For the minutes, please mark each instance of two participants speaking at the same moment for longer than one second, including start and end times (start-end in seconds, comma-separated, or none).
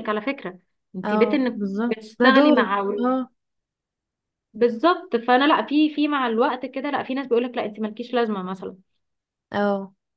1.0-2.8